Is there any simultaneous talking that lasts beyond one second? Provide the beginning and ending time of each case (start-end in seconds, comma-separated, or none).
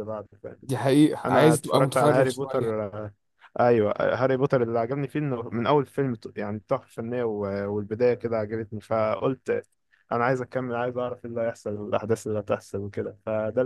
1.2-2.7